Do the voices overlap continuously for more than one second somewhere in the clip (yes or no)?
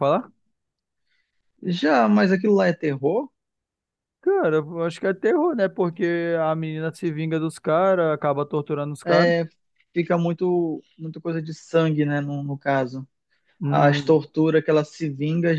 no